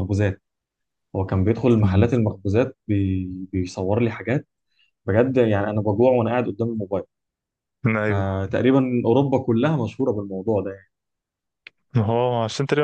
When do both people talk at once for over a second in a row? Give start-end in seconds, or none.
none